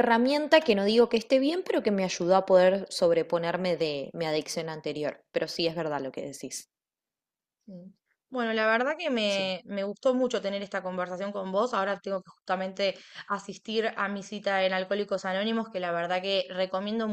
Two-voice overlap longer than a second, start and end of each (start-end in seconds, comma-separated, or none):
none